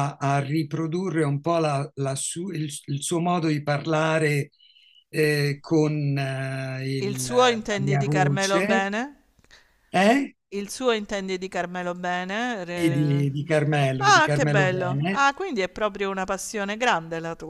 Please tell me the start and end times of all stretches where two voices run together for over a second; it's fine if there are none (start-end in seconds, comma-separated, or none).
7.0-8.9, 14.0-15.3